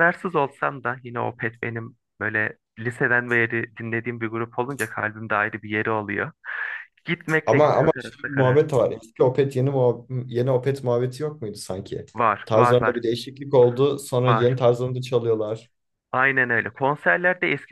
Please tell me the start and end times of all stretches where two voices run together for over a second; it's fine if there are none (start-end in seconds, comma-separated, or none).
7.5-8.7